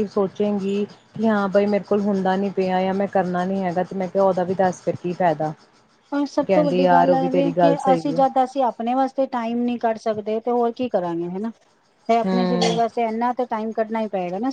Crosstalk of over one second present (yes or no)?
yes